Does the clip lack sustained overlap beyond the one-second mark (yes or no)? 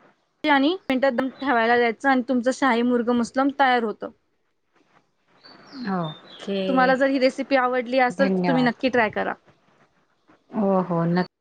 yes